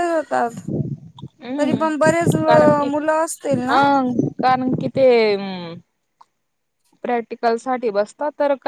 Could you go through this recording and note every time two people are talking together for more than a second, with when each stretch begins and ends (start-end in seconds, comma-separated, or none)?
none